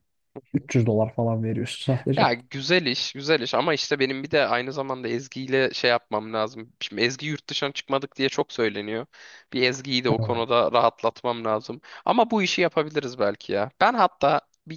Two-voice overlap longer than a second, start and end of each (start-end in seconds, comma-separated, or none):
none